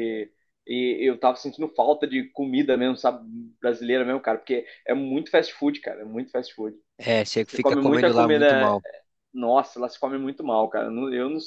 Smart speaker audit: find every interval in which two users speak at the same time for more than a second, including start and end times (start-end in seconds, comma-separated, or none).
7.4-8.8